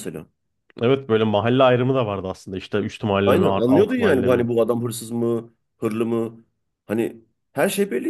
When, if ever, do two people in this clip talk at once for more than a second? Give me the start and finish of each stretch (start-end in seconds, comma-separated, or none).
3.2-4.5